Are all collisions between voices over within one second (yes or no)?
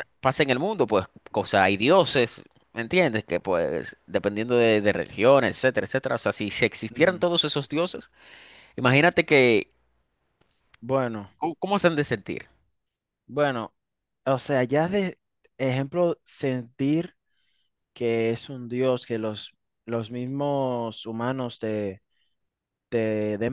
yes